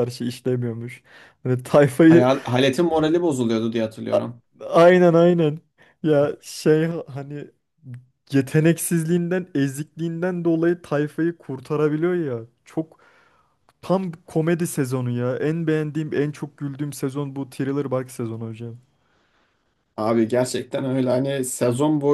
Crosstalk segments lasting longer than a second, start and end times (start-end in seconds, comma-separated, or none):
none